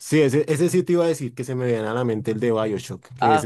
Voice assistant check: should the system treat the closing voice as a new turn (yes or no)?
yes